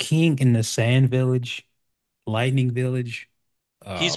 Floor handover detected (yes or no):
yes